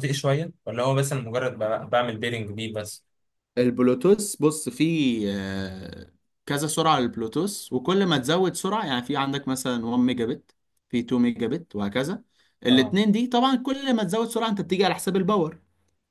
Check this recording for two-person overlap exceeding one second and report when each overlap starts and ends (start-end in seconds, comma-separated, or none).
none